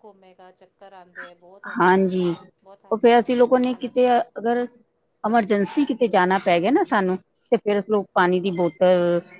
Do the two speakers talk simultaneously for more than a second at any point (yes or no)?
yes